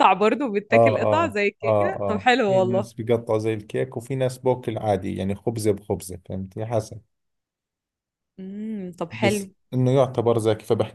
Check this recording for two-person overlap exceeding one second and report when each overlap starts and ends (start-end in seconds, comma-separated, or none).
0.7-2.9